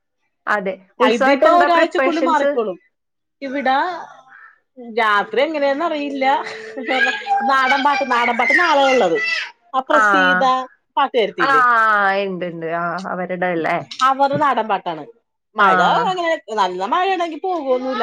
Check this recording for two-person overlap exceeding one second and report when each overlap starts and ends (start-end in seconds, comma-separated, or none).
1.1-2.5